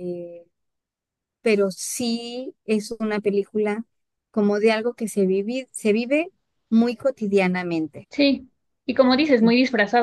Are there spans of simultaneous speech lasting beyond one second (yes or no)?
no